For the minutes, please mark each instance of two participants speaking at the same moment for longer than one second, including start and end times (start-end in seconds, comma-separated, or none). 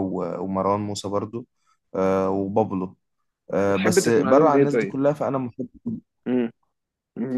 3.7-4.9